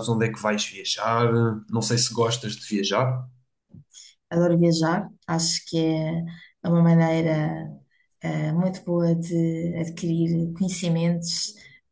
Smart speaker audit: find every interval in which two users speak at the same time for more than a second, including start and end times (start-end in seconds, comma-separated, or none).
none